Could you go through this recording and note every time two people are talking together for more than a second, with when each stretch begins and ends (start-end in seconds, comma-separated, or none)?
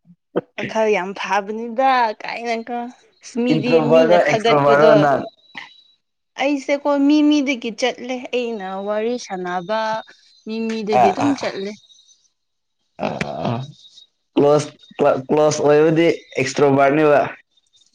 3.5-4.9